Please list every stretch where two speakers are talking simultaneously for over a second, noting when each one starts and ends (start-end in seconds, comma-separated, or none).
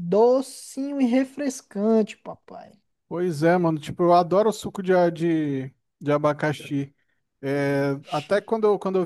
none